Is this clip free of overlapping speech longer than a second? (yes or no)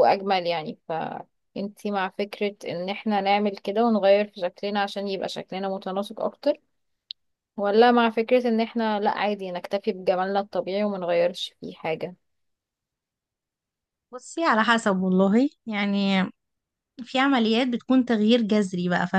yes